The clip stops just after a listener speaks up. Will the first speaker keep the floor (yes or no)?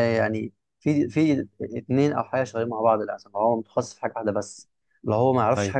no